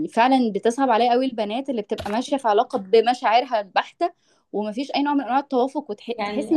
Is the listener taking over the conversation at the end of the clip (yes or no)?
yes